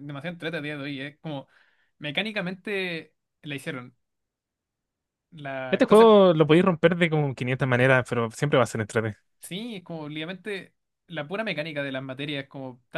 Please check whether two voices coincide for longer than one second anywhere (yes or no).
no